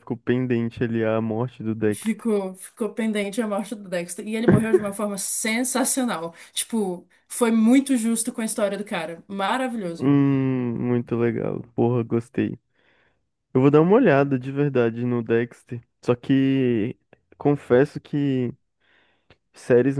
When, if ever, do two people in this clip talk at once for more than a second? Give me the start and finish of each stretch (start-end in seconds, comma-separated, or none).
none